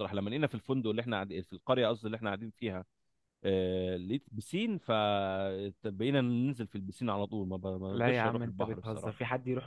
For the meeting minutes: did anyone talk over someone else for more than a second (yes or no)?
yes